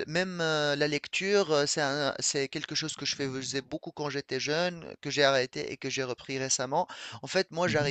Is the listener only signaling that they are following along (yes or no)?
yes